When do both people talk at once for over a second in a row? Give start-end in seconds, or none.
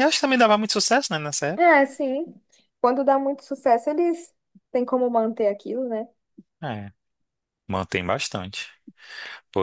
none